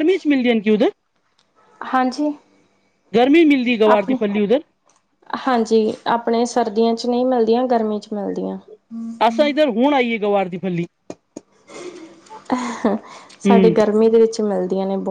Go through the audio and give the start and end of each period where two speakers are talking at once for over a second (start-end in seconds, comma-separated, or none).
none